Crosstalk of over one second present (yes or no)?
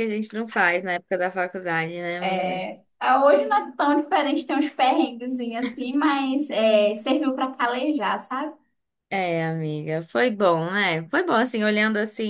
no